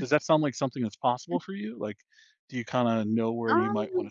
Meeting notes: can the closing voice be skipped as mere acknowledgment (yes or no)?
yes